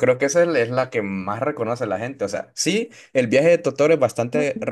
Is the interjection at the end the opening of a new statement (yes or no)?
no